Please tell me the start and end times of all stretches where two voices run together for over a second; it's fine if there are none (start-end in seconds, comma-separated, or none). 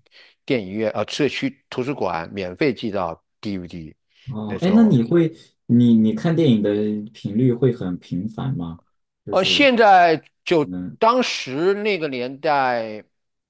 none